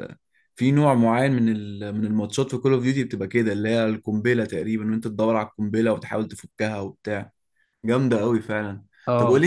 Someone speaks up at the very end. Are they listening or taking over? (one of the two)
listening